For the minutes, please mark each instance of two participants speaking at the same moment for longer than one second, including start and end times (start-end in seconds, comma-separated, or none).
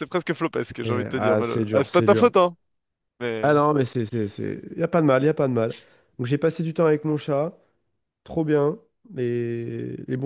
0.8-2.3